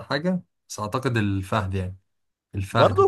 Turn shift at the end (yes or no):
no